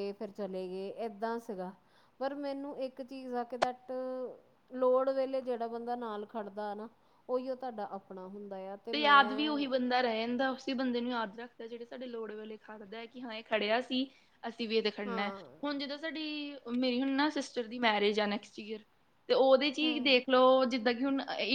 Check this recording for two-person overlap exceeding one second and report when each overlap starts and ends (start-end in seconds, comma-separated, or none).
none